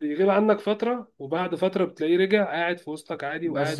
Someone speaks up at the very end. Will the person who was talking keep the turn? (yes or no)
no